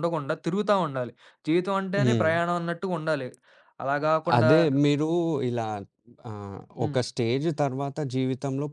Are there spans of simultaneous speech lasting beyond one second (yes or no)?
no